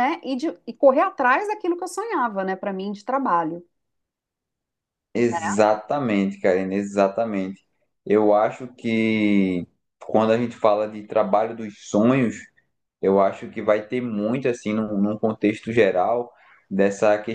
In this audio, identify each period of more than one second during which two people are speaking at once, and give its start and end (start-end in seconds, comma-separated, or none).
none